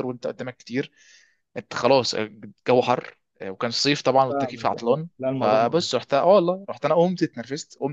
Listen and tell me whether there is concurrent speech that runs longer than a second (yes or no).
yes